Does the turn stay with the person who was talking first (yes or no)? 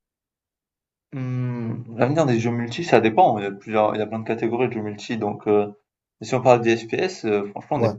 yes